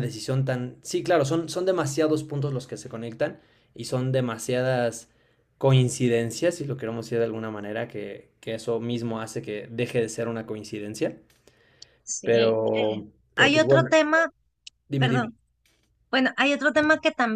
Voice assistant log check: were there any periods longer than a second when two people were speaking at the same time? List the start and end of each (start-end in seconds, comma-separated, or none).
12.2-14.0